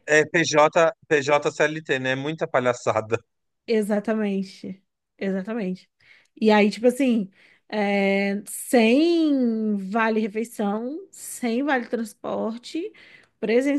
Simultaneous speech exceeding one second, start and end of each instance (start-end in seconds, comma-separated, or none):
none